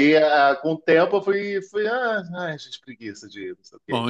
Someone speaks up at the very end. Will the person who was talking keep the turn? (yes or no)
no